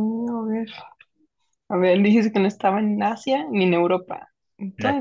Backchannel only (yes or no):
no